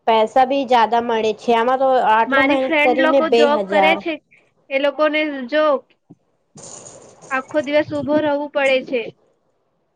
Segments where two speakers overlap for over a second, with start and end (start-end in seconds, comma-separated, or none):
2.3-4.0